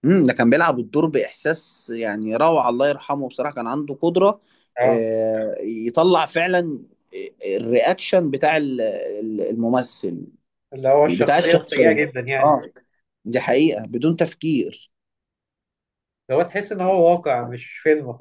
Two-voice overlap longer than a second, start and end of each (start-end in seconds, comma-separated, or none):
11.1-12.6